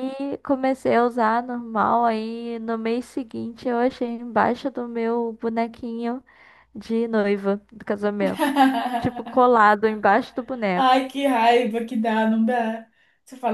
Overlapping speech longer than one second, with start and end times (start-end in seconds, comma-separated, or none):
none